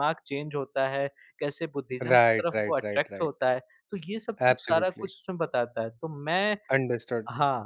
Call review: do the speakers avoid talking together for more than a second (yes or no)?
no